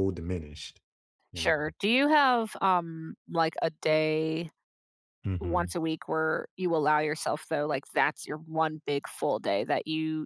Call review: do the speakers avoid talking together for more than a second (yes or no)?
yes